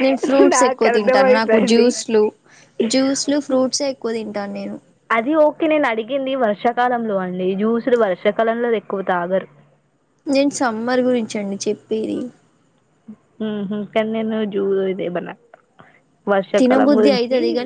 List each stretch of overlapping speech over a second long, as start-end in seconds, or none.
0.5-1.9